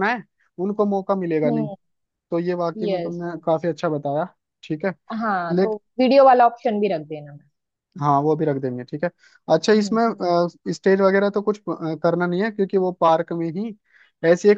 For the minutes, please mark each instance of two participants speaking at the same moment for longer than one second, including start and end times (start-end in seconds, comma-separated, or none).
none